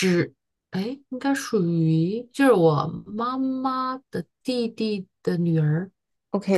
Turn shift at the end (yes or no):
yes